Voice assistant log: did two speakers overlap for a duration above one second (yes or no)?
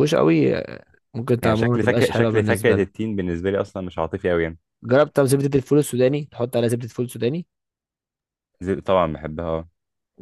yes